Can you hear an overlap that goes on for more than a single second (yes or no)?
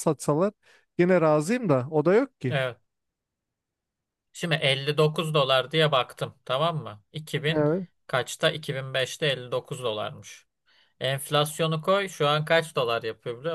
no